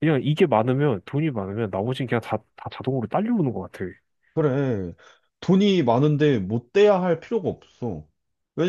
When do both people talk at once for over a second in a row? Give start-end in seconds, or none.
none